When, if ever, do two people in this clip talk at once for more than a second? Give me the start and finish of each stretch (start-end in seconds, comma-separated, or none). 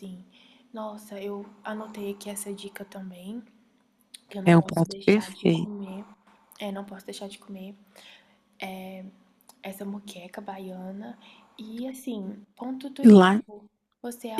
4.5-5.7